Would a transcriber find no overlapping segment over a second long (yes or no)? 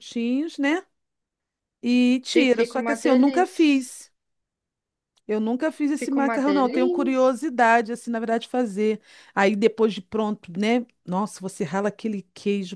no